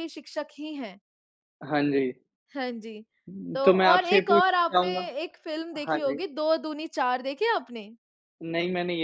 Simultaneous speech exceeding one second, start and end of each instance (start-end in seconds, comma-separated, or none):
3.6-5.0